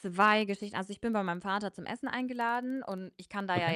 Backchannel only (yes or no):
yes